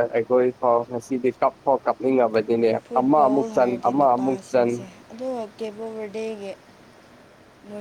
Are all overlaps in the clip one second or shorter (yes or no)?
yes